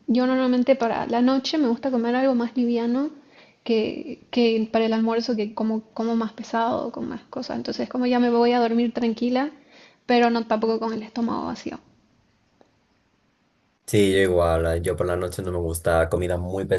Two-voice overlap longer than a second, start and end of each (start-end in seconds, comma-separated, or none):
none